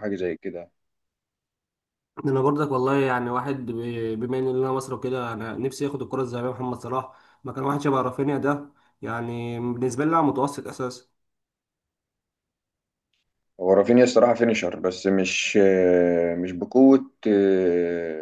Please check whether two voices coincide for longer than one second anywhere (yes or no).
no